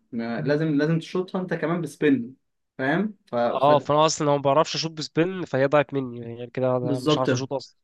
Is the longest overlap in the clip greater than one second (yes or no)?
no